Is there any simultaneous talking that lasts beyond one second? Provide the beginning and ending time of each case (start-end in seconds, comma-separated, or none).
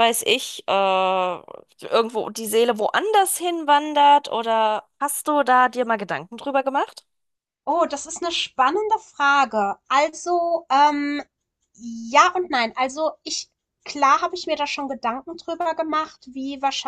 none